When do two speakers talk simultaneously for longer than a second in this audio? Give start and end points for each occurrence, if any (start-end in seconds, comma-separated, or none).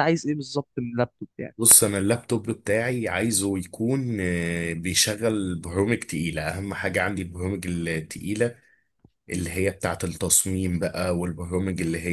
none